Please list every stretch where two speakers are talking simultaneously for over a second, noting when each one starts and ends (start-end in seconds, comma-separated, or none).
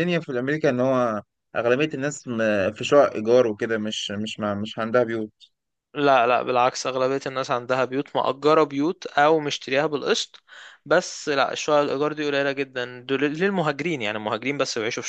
none